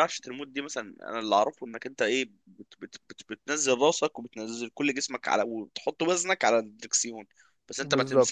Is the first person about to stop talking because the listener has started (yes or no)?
no